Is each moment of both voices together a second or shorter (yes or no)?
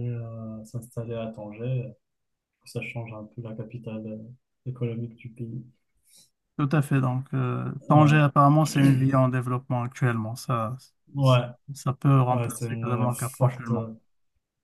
no